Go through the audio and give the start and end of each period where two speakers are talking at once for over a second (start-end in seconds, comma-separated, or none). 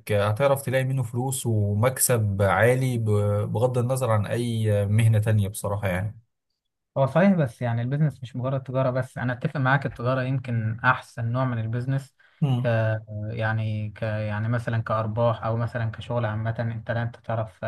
none